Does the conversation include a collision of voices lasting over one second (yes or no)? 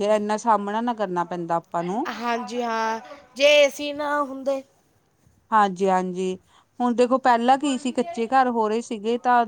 no